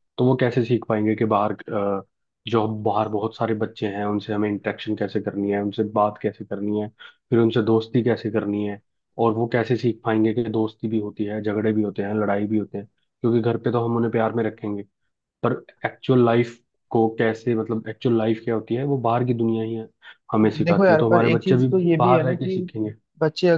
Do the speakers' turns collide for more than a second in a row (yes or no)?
yes